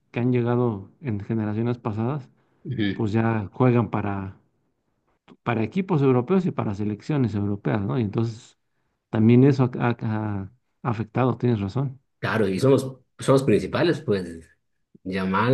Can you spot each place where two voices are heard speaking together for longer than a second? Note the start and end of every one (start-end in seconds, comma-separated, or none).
none